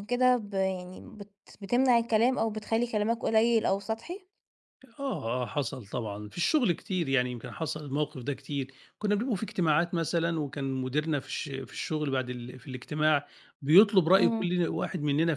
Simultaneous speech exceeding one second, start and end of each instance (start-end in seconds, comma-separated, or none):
none